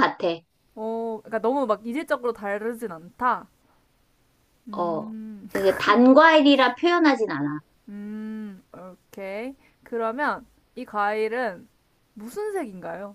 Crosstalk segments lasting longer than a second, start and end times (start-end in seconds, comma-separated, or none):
none